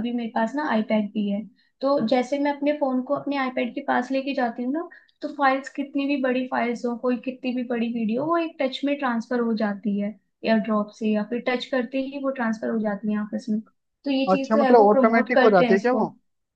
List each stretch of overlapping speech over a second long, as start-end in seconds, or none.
14.3-16.0